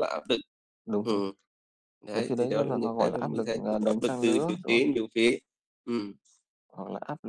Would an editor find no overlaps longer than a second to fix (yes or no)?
no